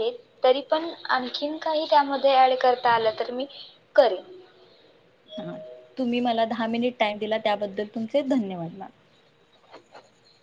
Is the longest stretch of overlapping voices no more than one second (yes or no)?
yes